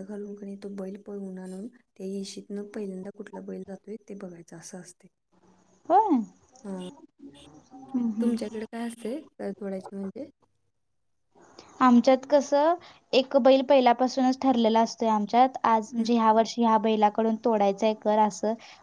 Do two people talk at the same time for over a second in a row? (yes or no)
no